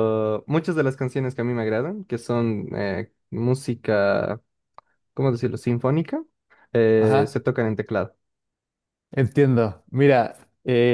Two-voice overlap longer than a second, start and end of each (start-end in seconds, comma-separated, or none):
none